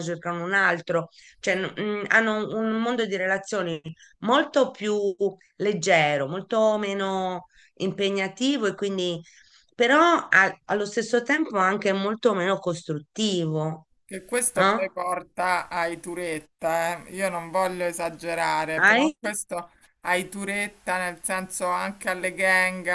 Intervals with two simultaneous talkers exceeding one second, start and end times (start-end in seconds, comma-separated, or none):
none